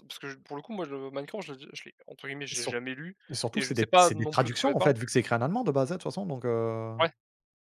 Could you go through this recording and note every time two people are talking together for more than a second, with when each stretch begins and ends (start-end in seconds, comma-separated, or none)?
3.5-4.9